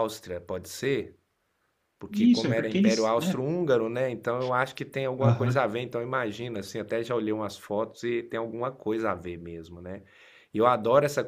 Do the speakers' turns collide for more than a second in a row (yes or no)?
yes